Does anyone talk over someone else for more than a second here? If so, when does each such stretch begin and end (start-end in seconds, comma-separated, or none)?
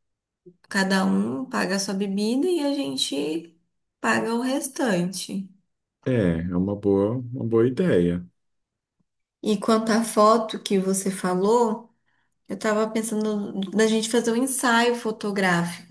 none